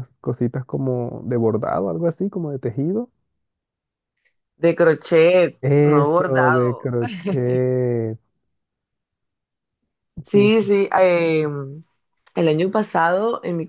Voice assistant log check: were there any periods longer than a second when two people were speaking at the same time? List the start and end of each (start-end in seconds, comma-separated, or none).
5.6-6.9